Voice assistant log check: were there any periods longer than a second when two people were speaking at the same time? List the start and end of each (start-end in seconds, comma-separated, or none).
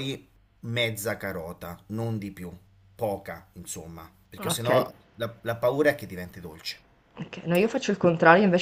none